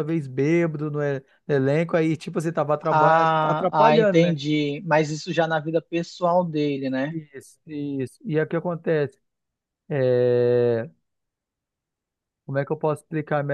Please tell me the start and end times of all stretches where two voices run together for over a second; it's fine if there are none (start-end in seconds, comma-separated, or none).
2.8-4.3